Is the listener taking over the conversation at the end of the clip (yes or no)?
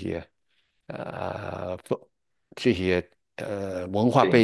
no